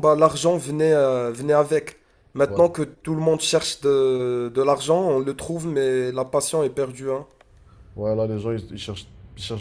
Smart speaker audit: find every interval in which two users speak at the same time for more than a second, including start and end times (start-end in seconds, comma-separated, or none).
none